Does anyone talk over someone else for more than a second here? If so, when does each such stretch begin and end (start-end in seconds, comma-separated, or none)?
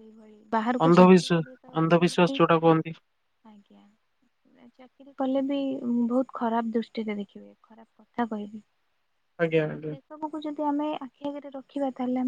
0.9-2.4